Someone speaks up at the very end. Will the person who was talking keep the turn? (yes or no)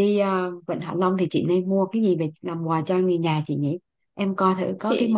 yes